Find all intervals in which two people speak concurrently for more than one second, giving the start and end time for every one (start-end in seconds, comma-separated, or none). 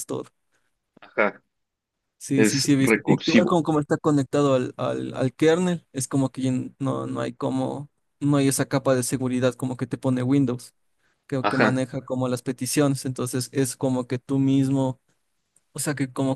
2.3-3.6